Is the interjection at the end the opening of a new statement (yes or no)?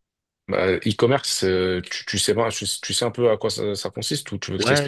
yes